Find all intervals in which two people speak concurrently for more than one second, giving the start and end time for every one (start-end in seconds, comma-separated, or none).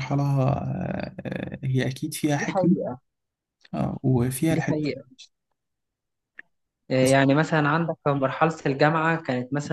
none